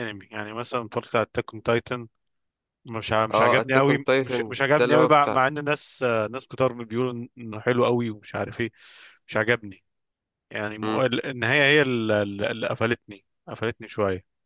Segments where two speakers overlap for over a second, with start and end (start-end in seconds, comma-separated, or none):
3.3-5.4